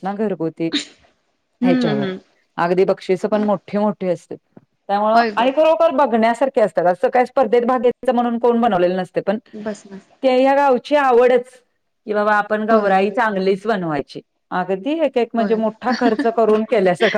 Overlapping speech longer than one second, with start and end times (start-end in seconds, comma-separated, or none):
none